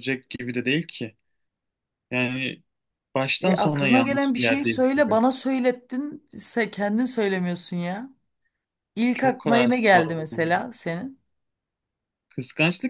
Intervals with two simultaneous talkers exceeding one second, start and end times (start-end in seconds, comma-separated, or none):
3.4-5.2, 9.1-10.5